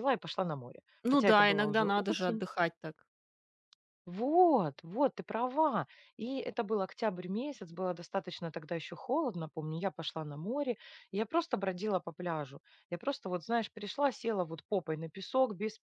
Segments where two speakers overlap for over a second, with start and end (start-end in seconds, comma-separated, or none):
1.0-2.4